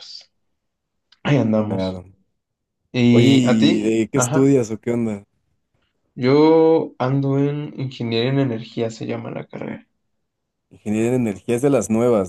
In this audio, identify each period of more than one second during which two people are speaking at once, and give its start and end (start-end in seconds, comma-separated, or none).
3.1-4.5